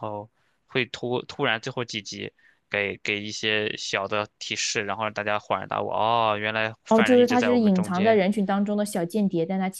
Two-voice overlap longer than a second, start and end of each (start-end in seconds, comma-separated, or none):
6.9-8.2